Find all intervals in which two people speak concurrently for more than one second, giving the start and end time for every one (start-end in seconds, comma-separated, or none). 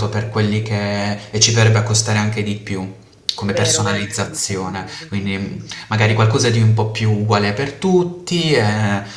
3.5-6.6